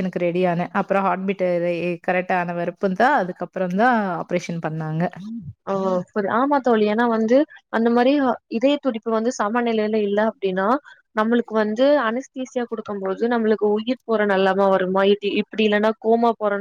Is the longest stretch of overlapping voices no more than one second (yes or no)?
yes